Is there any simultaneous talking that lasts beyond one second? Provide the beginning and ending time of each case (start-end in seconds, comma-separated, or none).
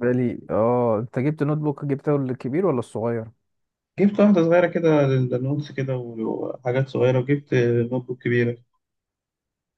none